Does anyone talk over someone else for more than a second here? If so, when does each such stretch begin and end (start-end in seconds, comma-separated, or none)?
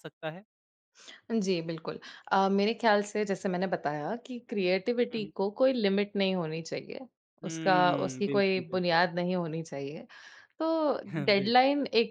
7.4-9.1